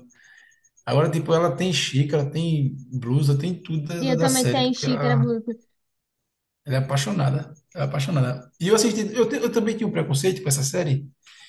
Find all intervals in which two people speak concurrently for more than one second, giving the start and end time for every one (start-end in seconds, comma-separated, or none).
4.0-5.2